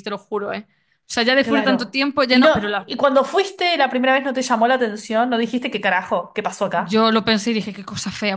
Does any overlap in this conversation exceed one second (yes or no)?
yes